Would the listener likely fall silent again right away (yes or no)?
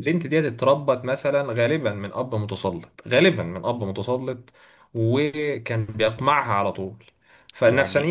yes